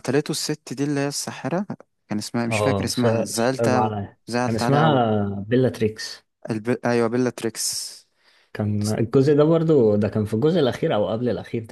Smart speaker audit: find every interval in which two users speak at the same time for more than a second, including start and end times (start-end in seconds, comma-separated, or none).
2.5-4.9